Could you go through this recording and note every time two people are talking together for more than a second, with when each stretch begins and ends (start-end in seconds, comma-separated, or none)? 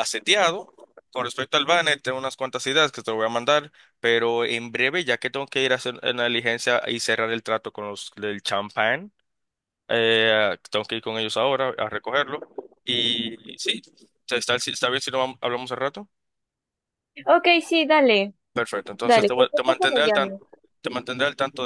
19.0-20.4